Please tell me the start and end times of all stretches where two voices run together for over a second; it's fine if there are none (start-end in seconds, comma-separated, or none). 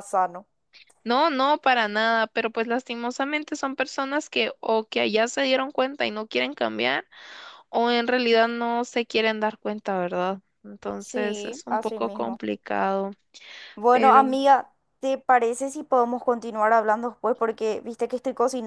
11.0-12.4